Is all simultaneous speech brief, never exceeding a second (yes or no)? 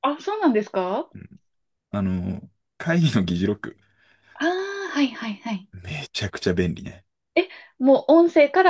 yes